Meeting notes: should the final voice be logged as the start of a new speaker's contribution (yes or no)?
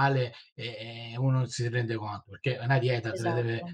no